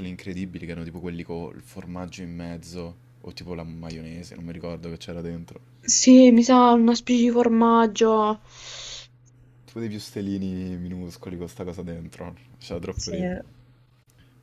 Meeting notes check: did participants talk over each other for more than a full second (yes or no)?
no